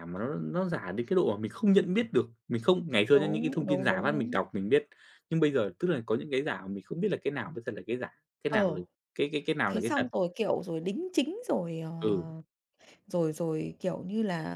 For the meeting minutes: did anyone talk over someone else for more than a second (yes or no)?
yes